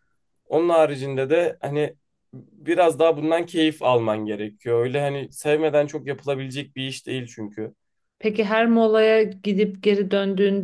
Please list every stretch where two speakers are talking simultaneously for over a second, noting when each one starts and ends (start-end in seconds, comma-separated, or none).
none